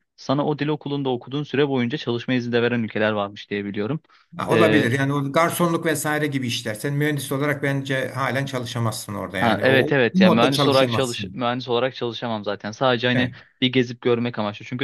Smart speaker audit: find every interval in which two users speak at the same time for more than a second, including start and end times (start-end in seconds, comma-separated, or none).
9.4-11.4